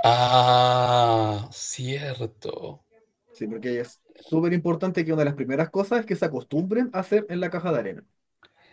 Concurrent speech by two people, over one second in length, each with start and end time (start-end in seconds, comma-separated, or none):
none